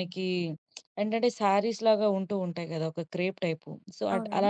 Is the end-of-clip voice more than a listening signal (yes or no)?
no